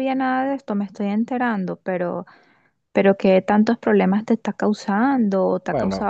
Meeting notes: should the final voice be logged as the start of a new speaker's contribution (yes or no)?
yes